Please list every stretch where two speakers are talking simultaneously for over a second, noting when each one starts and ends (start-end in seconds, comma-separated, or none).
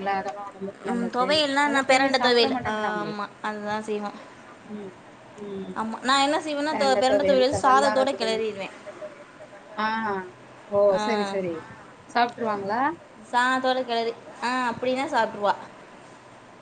0.9-3.1, 6.7-8.4